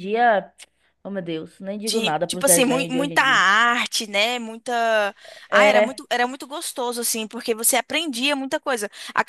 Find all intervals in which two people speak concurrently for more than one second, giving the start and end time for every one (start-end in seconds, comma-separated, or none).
1.9-3.4